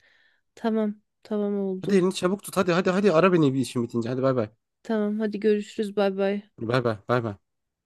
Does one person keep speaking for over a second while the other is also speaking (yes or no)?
no